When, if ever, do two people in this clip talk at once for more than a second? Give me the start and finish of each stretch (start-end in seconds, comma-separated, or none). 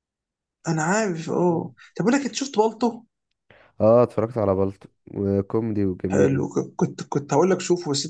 none